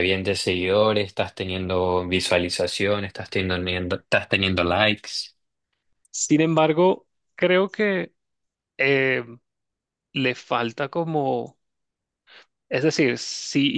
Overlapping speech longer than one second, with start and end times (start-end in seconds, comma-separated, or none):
none